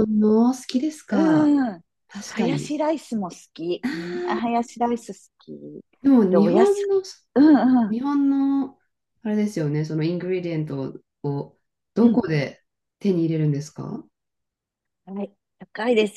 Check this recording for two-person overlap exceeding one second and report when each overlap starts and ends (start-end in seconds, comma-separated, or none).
none